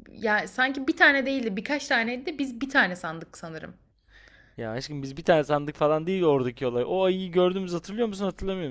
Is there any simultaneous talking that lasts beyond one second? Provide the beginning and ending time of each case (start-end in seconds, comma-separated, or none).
none